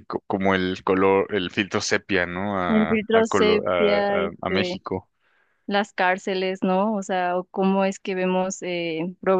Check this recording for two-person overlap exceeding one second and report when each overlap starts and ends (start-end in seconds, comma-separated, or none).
2.7-4.8